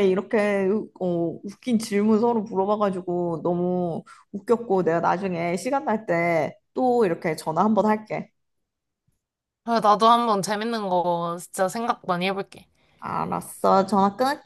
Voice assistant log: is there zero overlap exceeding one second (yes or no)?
yes